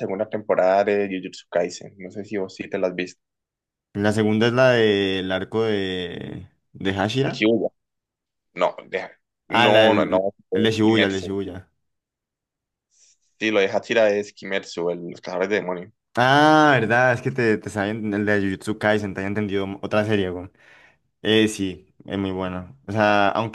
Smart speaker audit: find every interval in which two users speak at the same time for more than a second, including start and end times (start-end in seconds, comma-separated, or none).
9.5-11.4